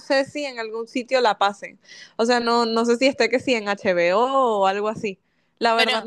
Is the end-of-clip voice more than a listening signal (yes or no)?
no